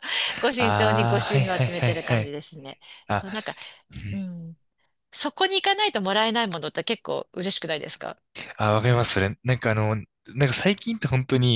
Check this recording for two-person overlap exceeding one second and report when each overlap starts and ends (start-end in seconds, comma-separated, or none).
0.6-2.4